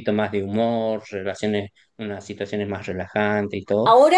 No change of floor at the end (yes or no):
no